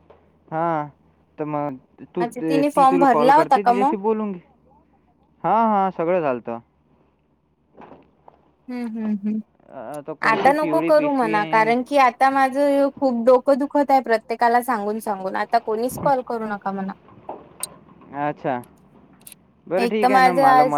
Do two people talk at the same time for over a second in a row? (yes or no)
yes